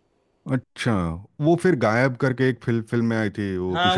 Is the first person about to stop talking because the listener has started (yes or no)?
yes